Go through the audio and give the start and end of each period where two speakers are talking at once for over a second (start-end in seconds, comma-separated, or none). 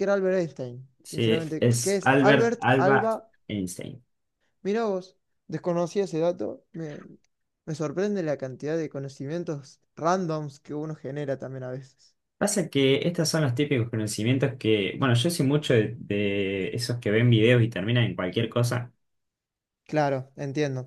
1.0-3.1